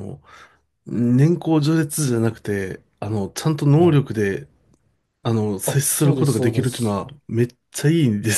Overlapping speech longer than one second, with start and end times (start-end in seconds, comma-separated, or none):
5.6-7.0